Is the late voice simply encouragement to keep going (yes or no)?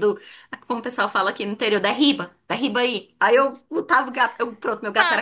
no